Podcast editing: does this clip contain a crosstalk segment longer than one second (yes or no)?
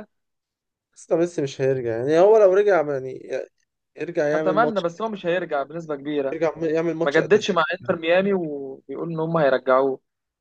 no